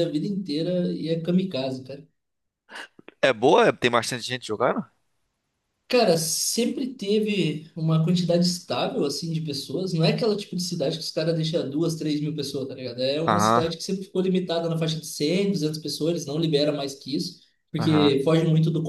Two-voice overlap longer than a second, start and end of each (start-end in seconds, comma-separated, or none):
none